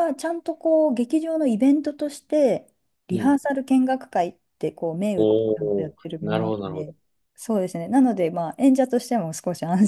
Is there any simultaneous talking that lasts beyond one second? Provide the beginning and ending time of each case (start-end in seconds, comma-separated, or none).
5.2-6.9